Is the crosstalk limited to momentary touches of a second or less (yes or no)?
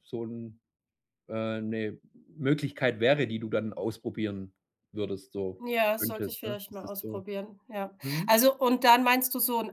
no